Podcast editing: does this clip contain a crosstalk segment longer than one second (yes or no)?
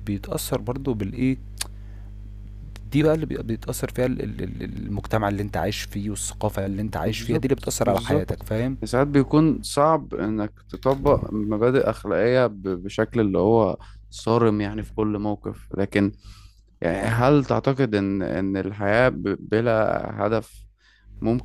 yes